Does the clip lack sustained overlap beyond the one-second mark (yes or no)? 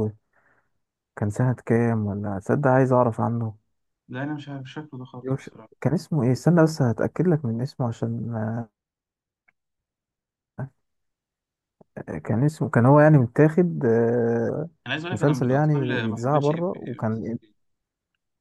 no